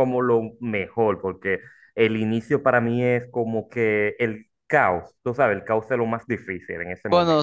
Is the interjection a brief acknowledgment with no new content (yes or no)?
no